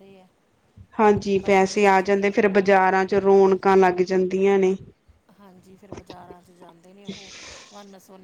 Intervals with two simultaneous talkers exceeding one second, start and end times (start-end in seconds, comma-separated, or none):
1.4-2.7